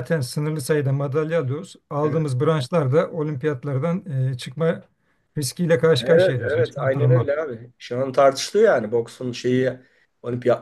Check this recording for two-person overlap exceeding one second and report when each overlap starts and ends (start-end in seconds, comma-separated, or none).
6.0-7.3